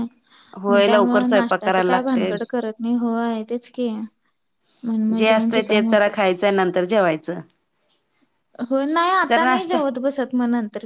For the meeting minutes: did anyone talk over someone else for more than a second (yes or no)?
yes